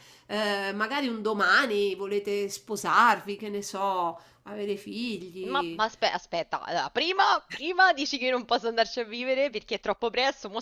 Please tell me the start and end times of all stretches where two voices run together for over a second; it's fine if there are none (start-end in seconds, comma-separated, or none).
none